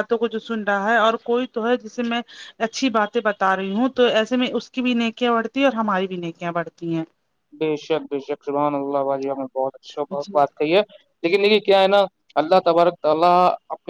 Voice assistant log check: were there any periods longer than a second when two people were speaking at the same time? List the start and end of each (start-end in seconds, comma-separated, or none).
none